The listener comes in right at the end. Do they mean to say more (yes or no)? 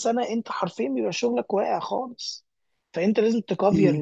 no